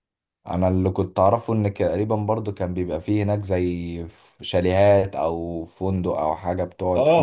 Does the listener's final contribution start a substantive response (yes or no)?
yes